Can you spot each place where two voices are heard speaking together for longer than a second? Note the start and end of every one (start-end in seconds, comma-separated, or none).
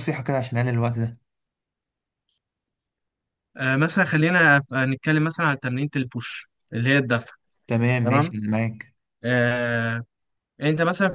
none